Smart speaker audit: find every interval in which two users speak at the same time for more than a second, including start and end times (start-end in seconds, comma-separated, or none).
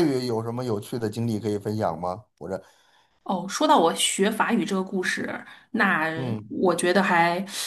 none